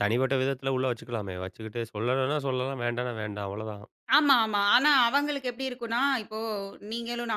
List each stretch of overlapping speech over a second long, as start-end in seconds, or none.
none